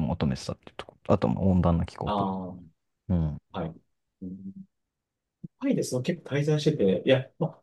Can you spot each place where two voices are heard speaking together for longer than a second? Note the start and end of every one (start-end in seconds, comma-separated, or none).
none